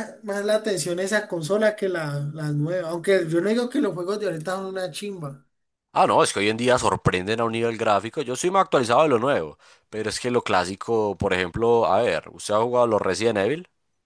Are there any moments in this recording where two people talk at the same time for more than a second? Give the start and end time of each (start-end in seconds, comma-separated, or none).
none